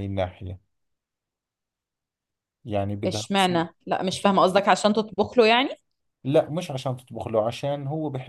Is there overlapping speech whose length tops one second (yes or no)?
no